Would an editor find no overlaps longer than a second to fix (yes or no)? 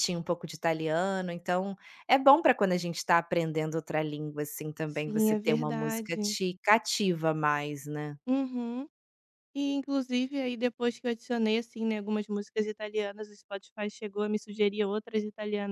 no